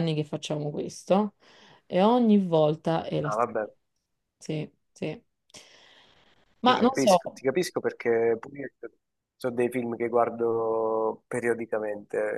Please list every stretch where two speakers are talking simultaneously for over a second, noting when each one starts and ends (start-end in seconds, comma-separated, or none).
none